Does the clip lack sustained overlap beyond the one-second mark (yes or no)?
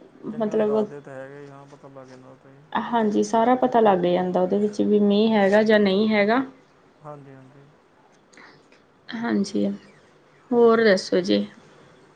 yes